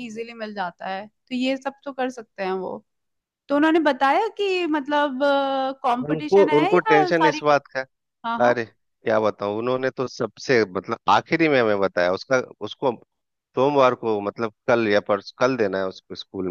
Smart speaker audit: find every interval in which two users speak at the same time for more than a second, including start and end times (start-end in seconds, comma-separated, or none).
6.1-7.6